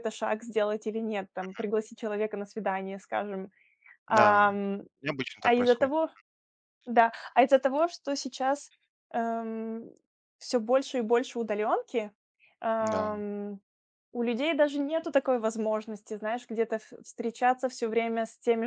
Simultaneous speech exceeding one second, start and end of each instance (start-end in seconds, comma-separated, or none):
none